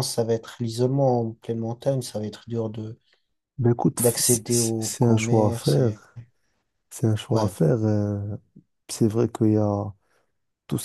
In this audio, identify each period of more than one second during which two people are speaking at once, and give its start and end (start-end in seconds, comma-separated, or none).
4.0-6.0